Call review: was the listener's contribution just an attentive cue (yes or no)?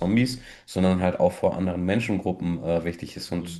yes